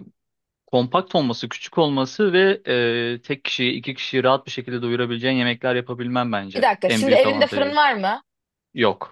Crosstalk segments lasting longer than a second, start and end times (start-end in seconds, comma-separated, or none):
6.5-7.8